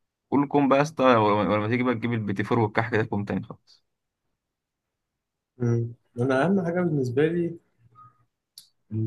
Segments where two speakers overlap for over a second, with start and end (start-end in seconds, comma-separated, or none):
none